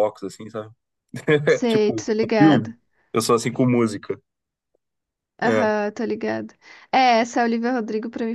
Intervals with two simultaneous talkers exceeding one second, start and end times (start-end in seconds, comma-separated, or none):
1.5-2.7